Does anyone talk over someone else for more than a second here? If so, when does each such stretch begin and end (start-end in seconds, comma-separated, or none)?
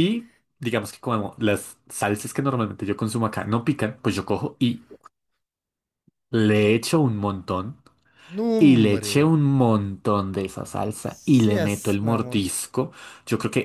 11.0-12.5